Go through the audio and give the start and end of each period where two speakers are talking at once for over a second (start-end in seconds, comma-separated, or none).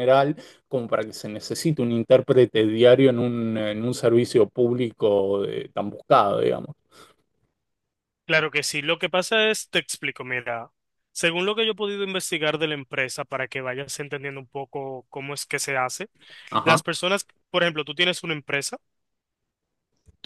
none